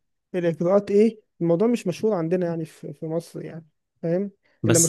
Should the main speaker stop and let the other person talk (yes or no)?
yes